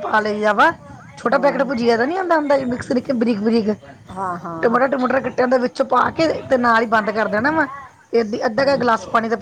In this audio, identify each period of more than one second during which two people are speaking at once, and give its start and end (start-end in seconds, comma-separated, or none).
none